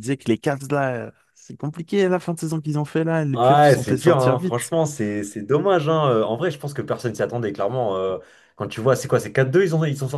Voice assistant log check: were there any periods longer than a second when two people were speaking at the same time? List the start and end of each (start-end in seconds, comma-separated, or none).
3.3-4.7